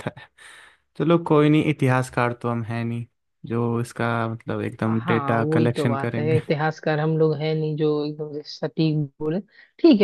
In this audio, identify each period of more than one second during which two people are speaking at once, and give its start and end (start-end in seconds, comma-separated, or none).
4.9-6.4